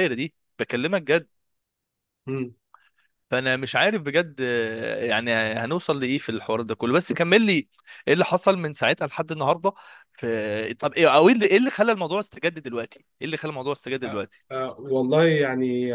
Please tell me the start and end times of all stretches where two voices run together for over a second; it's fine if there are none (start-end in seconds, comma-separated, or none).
none